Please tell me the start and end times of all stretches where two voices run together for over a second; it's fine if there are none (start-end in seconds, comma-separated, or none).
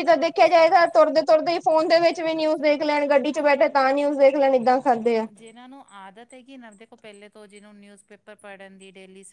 none